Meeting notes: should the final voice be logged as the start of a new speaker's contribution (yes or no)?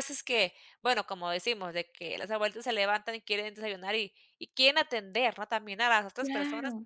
no